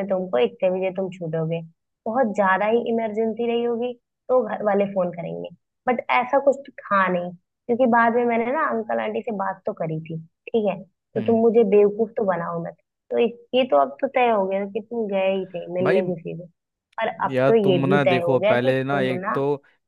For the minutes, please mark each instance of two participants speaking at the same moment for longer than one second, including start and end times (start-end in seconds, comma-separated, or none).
17.3-19.4